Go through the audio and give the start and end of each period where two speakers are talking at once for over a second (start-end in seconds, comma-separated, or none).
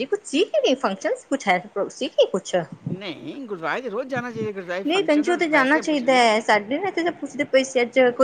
4.8-6.2